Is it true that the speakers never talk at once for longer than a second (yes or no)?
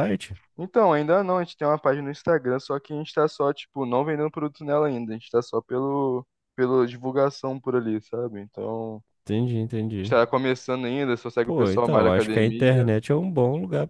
no